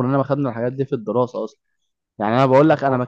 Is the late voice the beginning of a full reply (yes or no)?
no